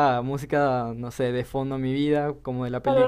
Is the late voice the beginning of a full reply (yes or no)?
yes